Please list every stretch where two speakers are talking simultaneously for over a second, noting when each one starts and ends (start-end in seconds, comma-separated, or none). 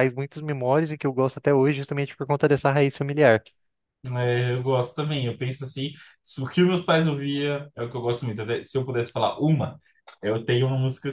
none